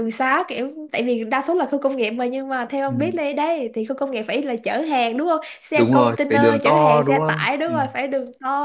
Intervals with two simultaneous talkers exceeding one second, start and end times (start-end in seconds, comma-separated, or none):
5.7-7.7